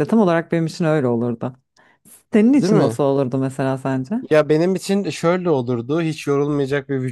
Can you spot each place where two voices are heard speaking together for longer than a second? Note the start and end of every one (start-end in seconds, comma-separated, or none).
none